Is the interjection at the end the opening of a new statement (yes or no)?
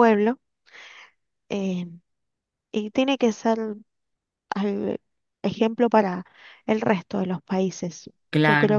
no